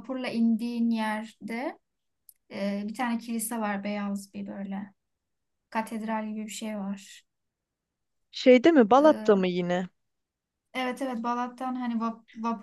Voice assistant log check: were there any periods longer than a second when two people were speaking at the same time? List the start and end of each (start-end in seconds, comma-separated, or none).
none